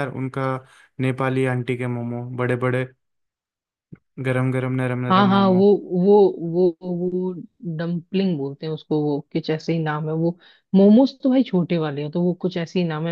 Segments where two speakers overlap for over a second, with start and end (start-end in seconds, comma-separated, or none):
none